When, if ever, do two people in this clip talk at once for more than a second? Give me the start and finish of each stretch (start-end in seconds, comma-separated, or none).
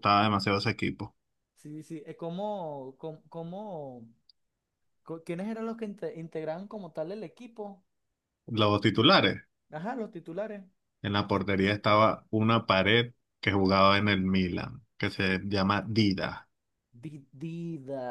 none